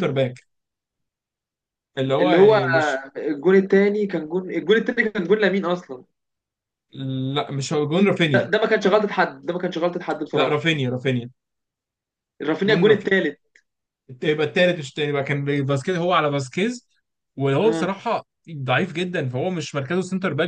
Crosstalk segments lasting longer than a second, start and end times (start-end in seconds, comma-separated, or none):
none